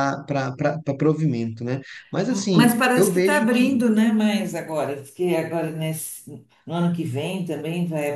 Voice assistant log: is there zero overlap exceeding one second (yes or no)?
no